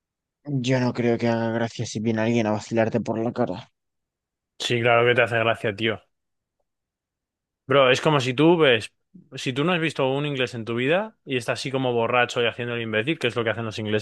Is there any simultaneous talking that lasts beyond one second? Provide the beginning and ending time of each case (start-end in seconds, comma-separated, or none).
none